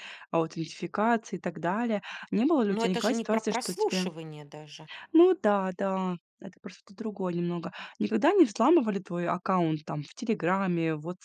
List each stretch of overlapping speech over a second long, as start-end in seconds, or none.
2.6-4.1